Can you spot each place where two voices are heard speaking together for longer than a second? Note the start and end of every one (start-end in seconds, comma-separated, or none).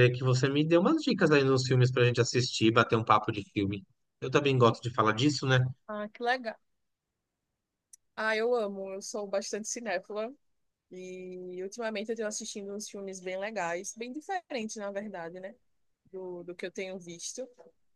none